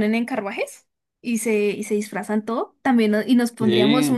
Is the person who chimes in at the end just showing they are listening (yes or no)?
yes